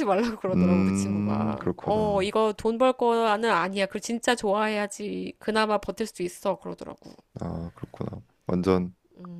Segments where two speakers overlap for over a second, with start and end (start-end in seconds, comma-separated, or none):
0.5-2.3